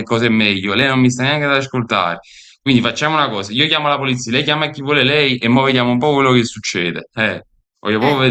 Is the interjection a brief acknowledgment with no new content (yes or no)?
no